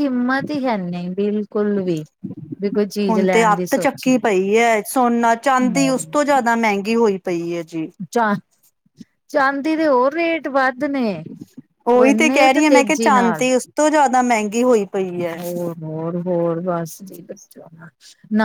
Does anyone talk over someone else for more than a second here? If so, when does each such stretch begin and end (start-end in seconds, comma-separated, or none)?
11.9-13.5